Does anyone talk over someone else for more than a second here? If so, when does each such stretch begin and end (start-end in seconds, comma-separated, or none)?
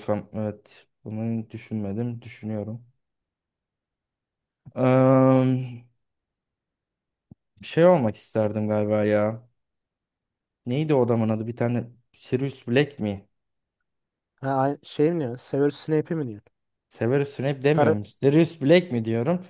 none